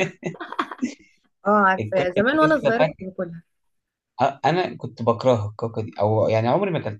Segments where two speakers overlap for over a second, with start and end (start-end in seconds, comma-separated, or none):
1.8-3.1